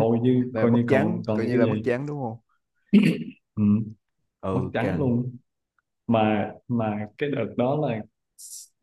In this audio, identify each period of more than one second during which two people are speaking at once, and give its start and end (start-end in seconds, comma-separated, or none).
0.5-1.9